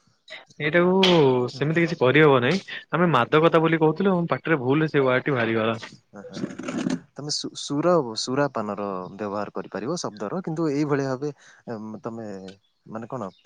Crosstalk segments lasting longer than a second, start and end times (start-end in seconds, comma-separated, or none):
none